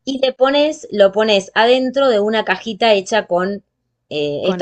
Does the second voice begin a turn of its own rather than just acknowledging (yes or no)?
no